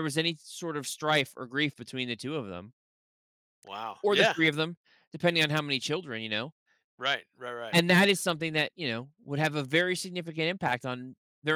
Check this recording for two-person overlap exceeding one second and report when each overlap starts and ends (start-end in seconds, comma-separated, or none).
none